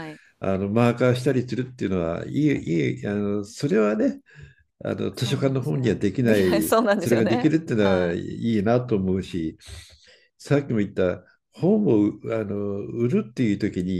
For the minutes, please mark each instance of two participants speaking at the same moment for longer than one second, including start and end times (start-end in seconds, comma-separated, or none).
5.2-8.2